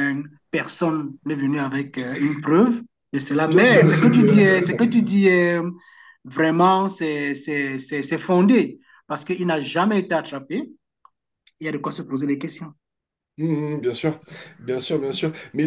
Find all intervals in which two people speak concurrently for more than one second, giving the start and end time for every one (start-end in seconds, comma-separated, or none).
3.5-4.9